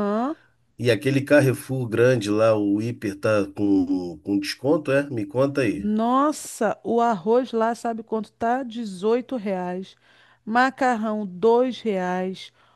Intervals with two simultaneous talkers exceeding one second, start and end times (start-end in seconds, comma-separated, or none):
none